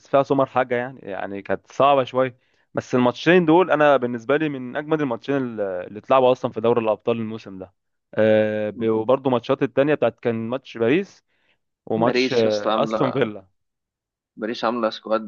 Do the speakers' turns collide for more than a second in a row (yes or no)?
yes